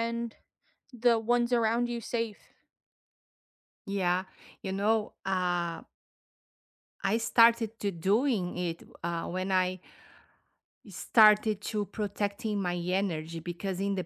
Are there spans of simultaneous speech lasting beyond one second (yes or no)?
no